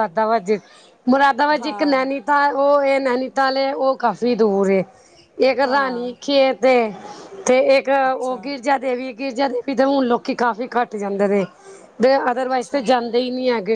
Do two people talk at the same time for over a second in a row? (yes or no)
no